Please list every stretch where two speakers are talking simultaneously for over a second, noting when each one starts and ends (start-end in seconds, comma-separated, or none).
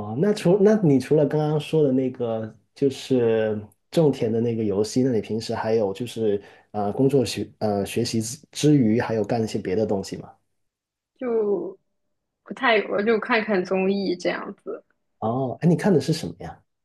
none